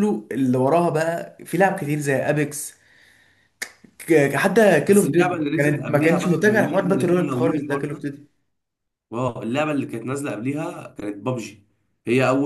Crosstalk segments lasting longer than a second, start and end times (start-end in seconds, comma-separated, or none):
4.9-8.1